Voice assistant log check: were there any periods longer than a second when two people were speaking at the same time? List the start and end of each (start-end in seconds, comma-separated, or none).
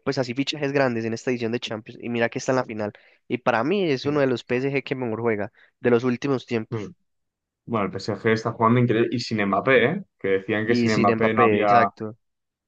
10.7-11.9